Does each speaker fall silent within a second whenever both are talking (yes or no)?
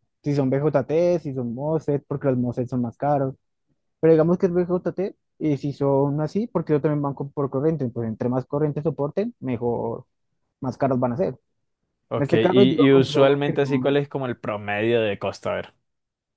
no